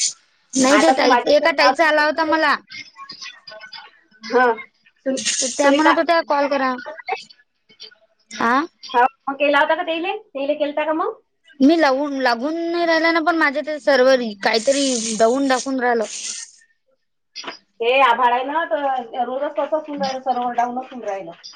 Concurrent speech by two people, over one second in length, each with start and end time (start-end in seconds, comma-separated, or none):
0.8-2.3